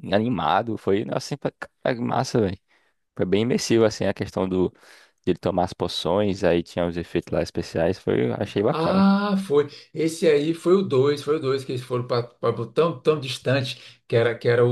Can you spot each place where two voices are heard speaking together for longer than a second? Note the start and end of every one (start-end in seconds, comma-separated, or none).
none